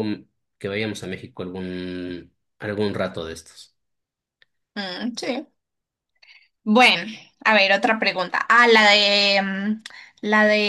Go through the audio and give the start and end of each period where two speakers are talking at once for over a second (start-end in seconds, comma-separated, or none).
none